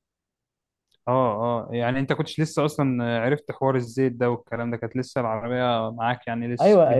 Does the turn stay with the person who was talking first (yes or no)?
no